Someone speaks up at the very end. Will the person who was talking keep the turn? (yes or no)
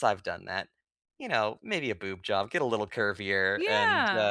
no